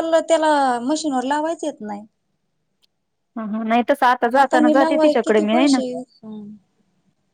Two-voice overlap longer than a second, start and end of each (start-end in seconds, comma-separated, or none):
4.4-5.8